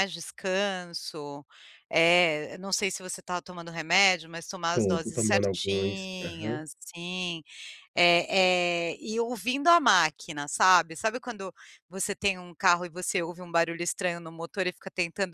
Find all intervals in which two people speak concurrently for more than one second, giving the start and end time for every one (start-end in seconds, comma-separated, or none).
4.7-6.6